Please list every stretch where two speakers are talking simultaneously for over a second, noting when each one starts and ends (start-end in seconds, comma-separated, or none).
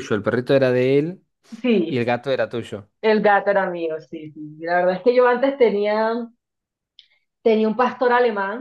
none